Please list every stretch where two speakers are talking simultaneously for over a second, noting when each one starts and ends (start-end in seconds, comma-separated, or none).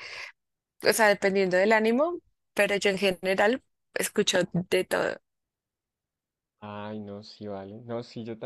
none